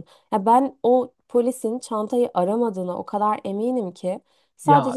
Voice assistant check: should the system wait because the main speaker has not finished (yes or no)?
no